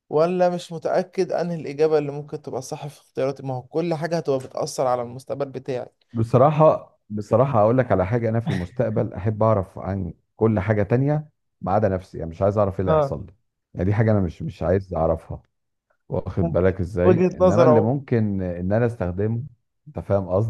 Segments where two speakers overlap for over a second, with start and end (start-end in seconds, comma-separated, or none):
16.4-18.0